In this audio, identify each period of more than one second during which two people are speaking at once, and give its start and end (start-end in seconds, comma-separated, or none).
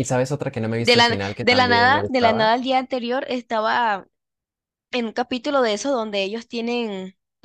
0.8-2.5